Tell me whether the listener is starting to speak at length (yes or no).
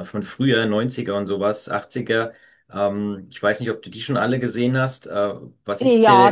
yes